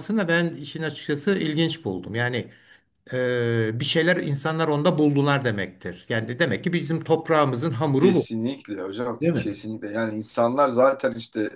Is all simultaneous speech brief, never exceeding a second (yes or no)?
yes